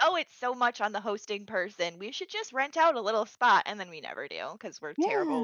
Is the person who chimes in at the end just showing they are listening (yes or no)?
no